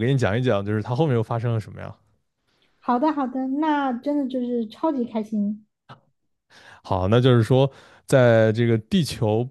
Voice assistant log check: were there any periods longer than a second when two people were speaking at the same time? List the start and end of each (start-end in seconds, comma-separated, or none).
none